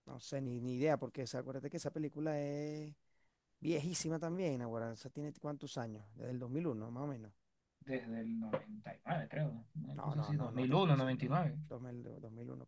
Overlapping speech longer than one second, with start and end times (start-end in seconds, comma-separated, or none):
9.9-11.6